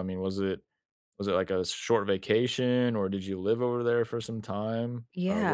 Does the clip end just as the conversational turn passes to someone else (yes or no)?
yes